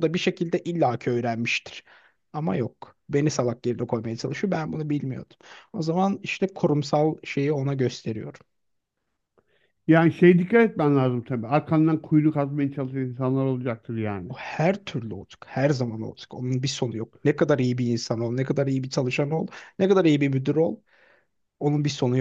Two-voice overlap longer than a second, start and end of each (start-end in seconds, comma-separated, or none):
none